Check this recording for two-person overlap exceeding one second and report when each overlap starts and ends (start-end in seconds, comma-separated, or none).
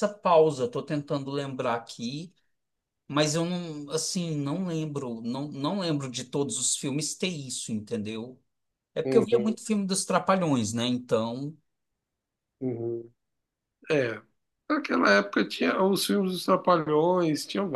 none